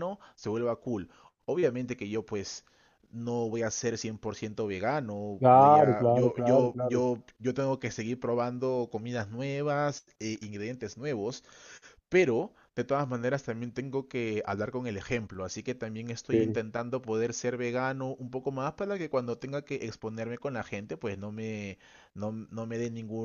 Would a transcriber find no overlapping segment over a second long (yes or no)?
no